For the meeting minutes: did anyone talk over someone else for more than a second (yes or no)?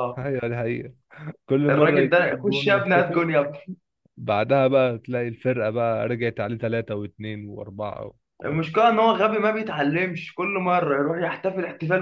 yes